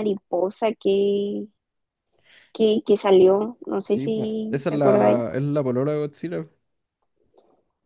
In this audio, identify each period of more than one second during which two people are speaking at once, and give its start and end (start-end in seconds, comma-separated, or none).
3.8-5.2